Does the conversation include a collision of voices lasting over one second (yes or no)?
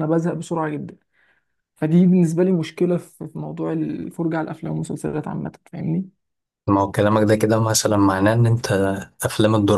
no